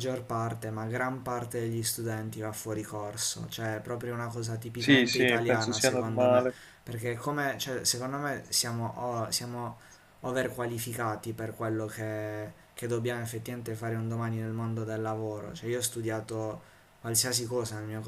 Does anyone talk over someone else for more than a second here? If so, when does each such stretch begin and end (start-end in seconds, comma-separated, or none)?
4.8-6.5